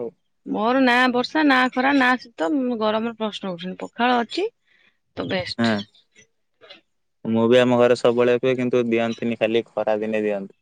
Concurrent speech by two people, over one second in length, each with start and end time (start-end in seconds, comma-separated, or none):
none